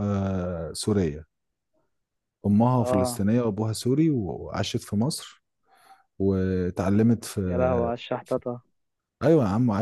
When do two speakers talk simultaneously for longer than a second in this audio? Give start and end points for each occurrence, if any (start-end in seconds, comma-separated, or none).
none